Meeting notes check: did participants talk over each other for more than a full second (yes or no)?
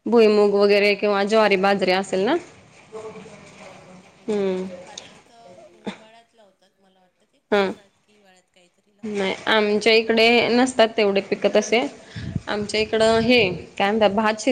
yes